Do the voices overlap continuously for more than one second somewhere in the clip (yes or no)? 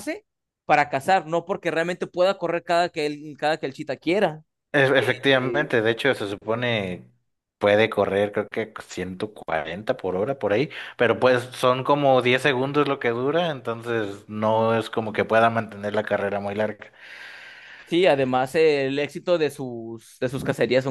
no